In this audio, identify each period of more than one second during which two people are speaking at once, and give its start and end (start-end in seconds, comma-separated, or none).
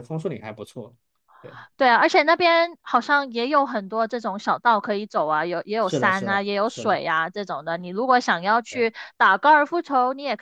5.8-7.0